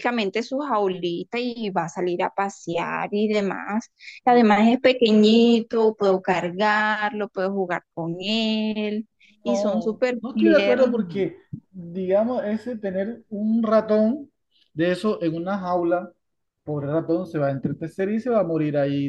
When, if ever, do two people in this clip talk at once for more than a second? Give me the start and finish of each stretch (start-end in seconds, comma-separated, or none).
9.4-10.9